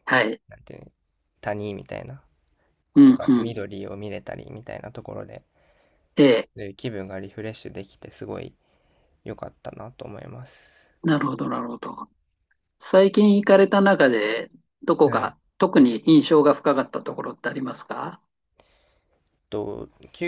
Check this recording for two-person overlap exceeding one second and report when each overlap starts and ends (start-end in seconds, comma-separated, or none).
none